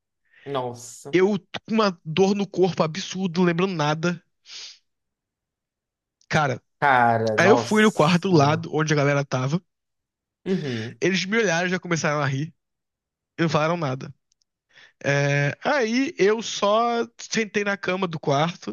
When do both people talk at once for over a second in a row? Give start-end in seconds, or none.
7.4-8.7